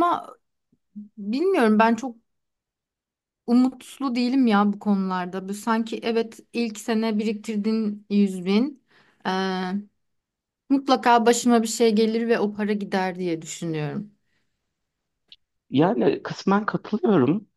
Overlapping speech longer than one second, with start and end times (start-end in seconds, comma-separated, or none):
none